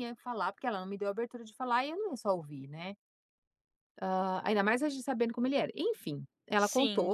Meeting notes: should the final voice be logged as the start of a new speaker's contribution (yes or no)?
no